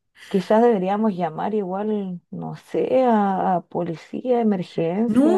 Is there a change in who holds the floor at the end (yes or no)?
yes